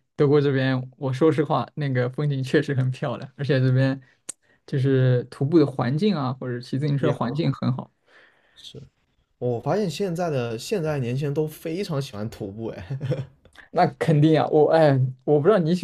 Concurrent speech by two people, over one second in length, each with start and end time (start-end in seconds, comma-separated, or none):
none